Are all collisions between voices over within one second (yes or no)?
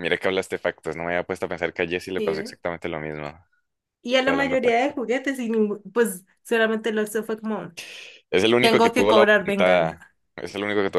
no